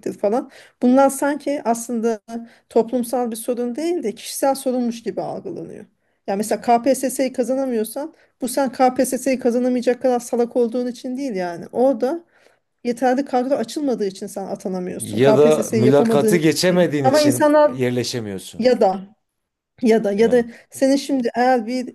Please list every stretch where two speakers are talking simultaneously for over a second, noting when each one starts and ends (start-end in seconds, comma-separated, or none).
15.0-17.7